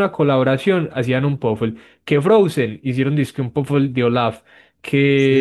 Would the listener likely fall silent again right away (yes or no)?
no